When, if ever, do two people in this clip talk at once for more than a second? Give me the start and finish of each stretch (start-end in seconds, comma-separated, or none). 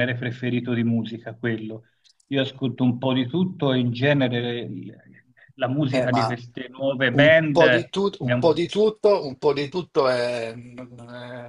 7.1-8.6